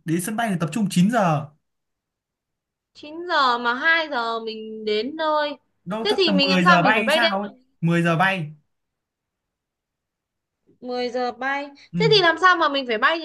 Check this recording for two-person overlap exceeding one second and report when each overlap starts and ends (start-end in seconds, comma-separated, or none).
6.0-7.5